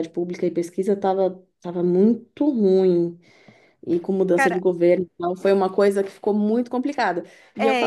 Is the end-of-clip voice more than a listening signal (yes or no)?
yes